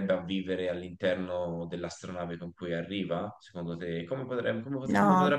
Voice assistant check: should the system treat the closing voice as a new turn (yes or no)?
yes